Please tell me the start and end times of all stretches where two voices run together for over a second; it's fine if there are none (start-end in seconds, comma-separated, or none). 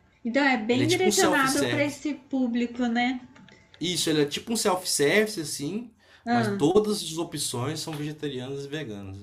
0.7-2.0